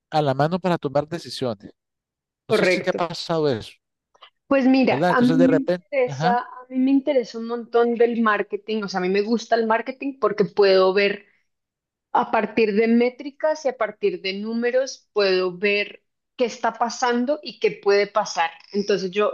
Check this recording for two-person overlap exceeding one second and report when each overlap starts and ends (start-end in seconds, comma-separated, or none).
4.9-6.4